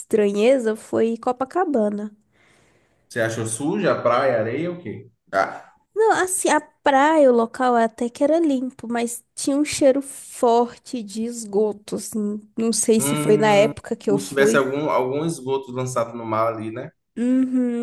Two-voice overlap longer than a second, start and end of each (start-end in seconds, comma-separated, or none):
13.0-14.6